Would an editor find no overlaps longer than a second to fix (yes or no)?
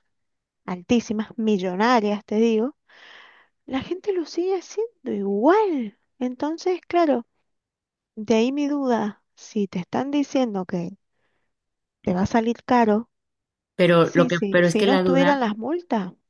no